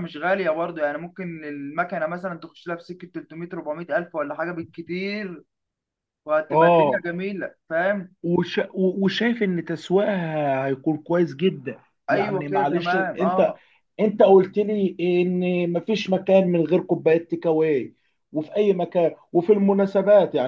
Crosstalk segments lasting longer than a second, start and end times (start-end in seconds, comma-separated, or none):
12.1-13.5